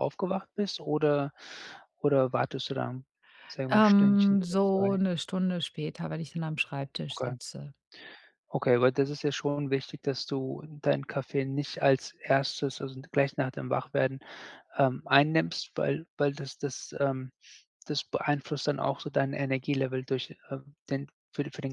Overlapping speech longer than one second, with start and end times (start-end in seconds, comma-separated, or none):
3.7-5.0